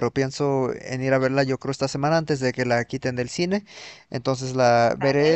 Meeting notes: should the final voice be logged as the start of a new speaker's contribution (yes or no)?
no